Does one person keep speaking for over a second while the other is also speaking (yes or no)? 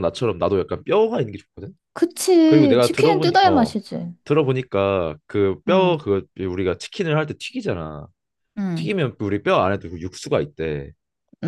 yes